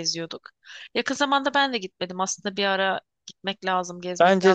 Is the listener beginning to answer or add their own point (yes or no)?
yes